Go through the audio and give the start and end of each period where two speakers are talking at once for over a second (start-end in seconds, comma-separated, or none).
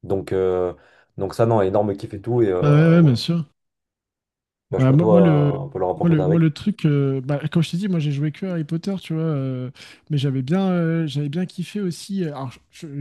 4.8-6.5